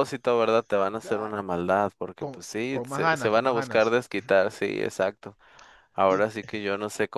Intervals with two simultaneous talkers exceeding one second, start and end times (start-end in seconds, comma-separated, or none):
2.2-4.0